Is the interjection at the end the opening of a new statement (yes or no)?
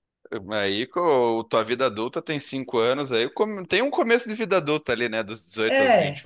yes